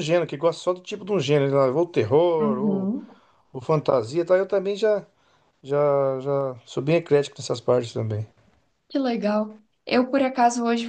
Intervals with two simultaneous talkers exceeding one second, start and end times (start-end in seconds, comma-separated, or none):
none